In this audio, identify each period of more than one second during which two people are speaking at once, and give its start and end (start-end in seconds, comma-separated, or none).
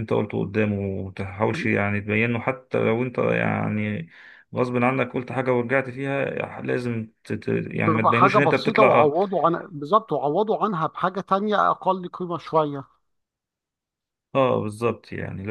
7.8-9.1